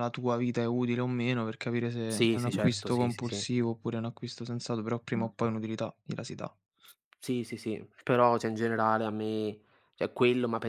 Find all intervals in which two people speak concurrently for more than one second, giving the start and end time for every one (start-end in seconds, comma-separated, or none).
2.1-3.4